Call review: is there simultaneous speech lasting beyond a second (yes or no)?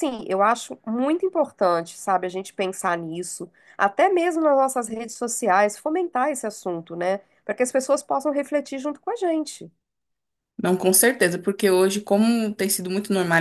no